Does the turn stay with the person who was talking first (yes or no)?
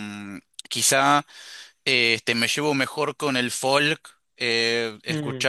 no